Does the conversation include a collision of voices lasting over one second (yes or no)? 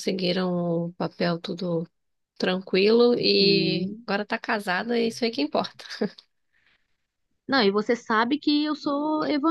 no